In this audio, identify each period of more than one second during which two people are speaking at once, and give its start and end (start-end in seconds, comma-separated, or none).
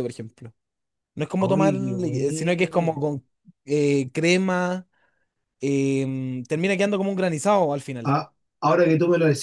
1.4-3.0